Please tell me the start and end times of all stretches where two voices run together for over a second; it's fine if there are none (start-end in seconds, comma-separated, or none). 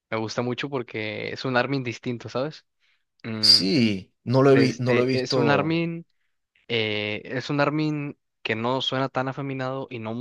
4.5-5.8